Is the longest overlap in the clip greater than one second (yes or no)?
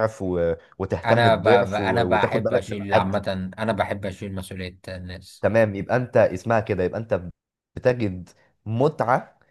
yes